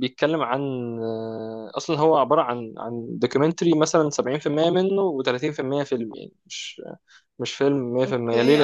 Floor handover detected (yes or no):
yes